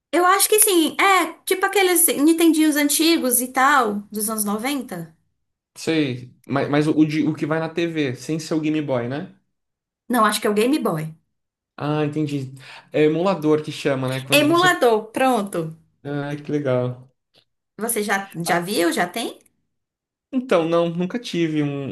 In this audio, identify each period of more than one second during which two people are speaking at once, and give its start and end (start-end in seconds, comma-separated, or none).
none